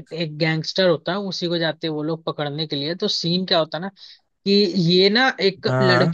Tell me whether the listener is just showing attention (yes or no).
yes